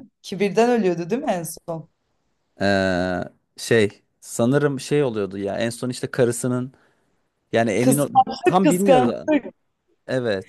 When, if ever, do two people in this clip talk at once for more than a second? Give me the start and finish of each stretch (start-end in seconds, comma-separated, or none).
7.8-9.2